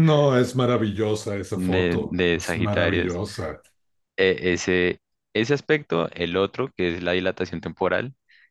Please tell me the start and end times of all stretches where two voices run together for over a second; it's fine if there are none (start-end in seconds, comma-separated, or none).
1.5-3.2